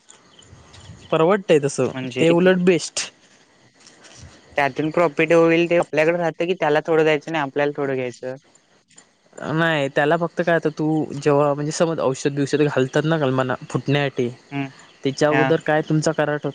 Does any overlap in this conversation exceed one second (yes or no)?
no